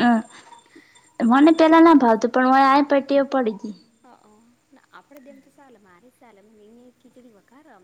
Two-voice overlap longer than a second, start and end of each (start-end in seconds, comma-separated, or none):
none